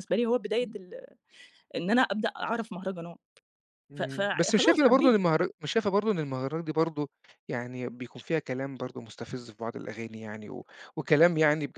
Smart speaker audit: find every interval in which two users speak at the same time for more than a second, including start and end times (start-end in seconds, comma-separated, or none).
4.0-5.2